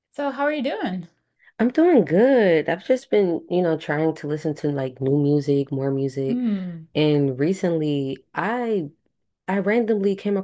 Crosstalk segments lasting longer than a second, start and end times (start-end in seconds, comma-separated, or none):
none